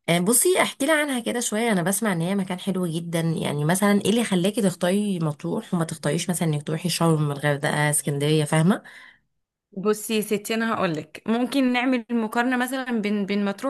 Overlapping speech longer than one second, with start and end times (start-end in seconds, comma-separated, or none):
none